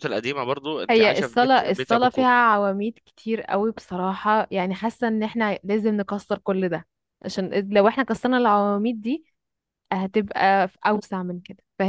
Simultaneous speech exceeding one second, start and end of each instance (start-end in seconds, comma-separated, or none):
0.9-2.3